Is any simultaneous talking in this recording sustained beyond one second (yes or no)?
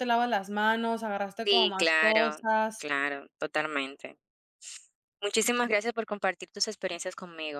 yes